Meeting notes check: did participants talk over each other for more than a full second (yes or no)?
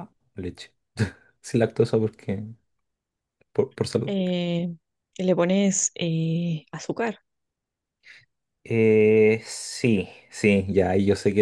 no